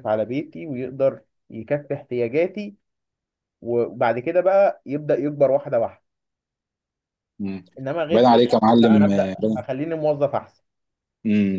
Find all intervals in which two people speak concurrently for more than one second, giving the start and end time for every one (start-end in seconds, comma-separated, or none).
8.1-9.7